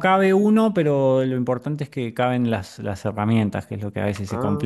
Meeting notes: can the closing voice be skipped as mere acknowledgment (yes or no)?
yes